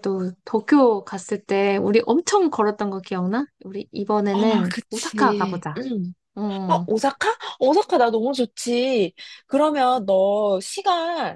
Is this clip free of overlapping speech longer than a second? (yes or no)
no